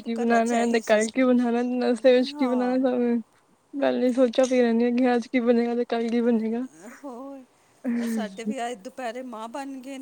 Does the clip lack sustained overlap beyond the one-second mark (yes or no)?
yes